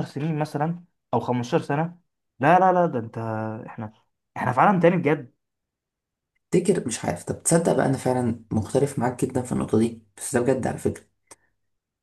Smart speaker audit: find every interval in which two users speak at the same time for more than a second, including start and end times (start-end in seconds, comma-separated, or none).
none